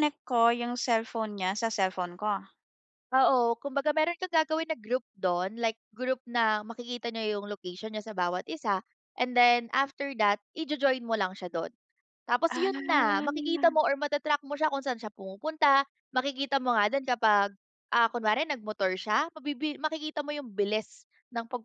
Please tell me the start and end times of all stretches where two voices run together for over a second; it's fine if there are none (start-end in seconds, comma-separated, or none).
12.5-13.8